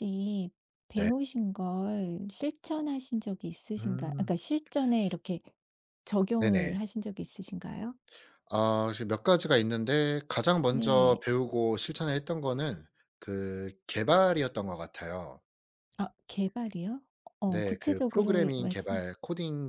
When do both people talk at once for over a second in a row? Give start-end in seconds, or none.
17.5-19.1